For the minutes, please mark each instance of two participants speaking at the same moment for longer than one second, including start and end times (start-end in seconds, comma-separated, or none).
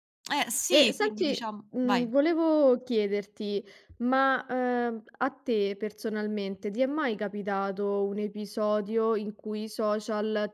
0.7-2.1